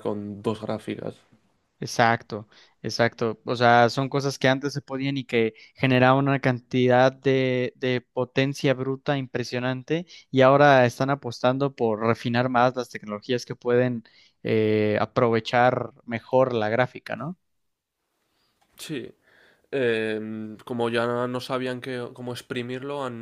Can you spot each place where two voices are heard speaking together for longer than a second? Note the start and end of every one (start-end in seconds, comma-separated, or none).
none